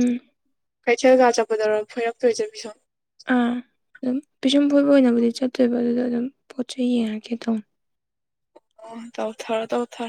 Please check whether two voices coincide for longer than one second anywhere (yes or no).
no